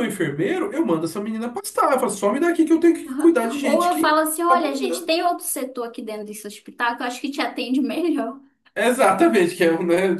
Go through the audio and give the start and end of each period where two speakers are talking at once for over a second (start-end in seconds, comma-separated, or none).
3.1-5.1